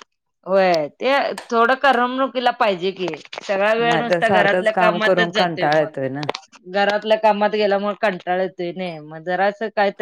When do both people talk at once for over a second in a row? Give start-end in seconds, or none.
3.8-6.2